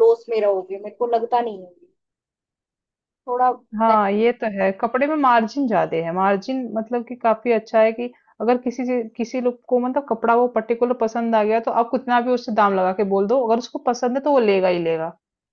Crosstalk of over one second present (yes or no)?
no